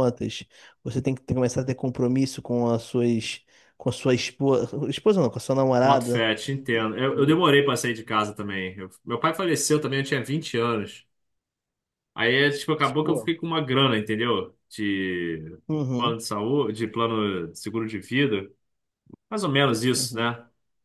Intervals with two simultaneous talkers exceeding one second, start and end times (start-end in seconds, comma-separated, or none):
none